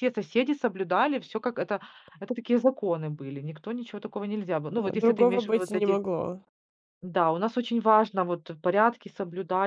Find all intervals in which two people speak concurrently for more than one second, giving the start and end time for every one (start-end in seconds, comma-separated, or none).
4.8-6.0